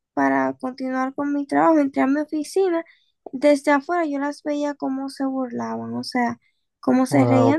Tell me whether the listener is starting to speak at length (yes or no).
yes